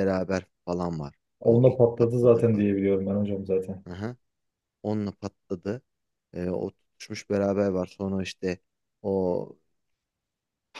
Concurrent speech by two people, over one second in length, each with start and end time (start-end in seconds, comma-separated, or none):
1.4-2.7